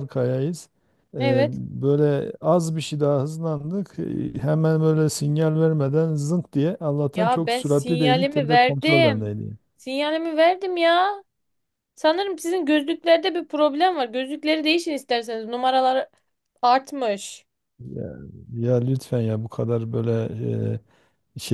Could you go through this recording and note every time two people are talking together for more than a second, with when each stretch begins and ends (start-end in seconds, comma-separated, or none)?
7.1-9.3